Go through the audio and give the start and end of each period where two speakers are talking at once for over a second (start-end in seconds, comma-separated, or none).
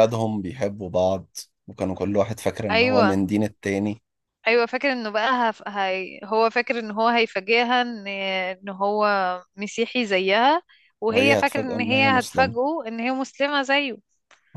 11.1-12.6